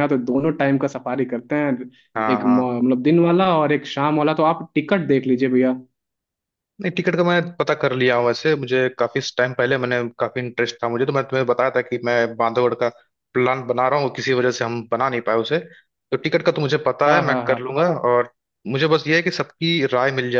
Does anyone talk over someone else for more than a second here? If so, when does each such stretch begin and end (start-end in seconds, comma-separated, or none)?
none